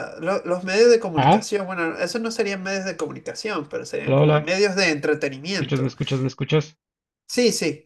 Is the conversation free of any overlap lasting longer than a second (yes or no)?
yes